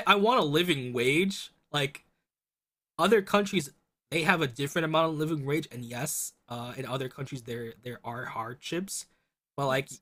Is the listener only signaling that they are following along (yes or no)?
yes